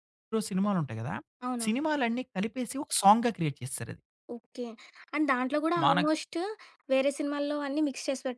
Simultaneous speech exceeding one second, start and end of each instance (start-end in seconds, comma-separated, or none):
none